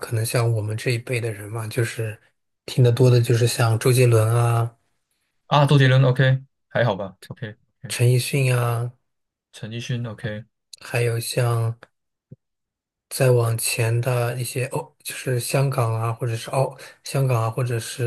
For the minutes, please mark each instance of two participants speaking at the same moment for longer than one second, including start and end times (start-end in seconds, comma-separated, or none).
none